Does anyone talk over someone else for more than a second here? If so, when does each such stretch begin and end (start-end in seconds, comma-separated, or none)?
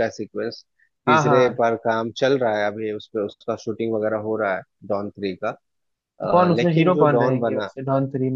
6.3-7.7